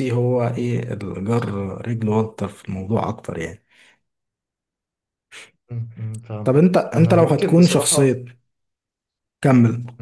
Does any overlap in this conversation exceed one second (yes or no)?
yes